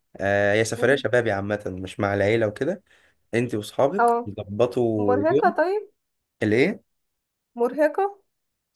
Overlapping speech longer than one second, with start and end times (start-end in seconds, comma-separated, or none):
none